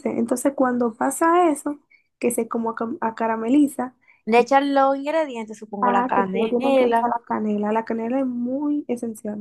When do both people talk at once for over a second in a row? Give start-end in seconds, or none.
5.8-7.1